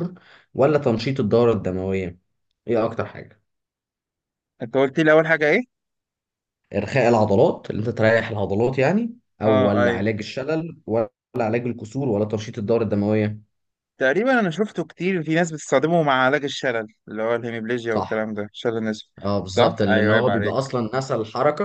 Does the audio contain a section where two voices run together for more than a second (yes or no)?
yes